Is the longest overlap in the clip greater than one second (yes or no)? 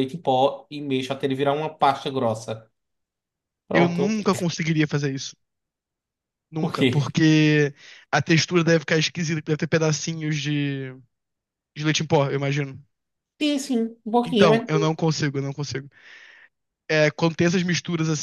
no